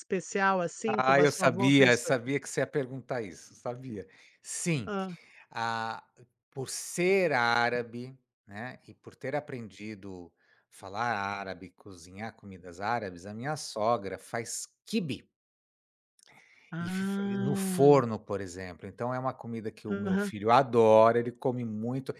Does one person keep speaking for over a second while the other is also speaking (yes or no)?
yes